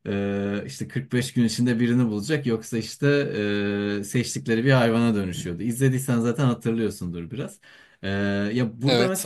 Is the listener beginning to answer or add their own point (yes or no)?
yes